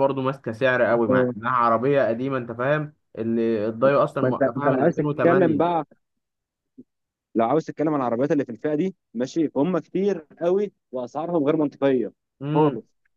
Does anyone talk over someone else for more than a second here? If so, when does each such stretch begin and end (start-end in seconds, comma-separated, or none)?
4.2-5.8